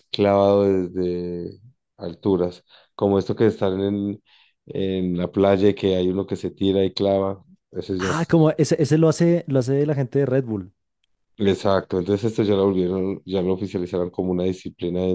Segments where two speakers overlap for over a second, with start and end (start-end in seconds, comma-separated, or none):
none